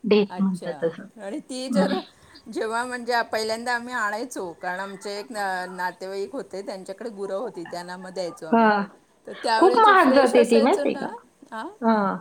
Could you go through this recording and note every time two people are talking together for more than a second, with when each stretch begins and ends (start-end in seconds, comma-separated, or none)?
9.6-11.1